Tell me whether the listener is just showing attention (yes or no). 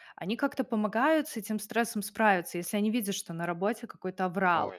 yes